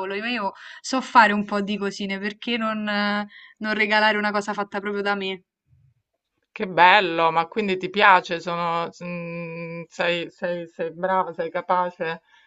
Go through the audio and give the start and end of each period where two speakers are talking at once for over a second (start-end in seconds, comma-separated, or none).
none